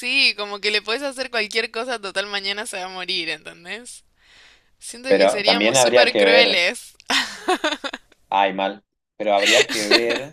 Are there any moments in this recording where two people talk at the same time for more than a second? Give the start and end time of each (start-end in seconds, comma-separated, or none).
5.1-6.7